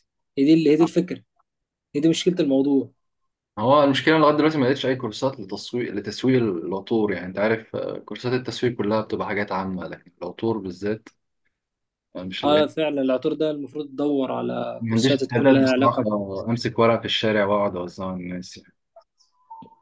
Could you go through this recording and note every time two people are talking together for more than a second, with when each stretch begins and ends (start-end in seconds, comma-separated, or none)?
14.8-16.0